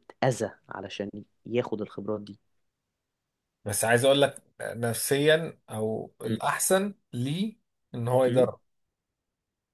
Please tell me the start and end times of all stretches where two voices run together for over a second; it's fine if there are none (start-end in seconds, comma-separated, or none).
none